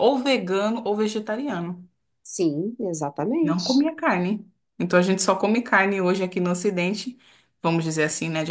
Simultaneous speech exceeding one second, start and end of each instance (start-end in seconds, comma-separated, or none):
none